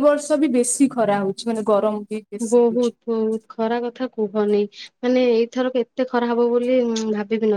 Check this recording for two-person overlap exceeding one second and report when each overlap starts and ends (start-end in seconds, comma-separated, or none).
none